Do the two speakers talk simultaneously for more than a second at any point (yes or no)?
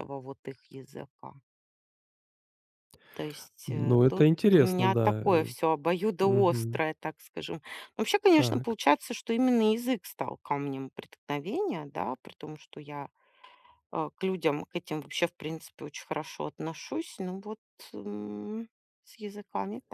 yes